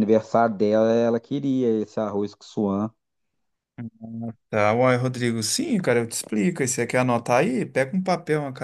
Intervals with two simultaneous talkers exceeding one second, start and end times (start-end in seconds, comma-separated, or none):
none